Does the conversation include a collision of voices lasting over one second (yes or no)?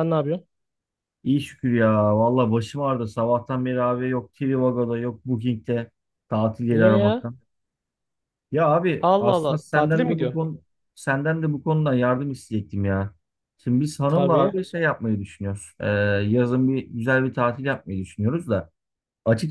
yes